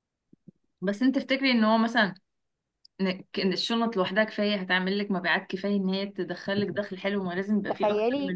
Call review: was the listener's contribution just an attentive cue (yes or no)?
no